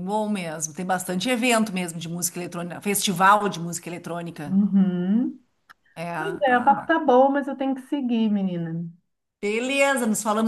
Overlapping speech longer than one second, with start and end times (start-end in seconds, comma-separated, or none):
none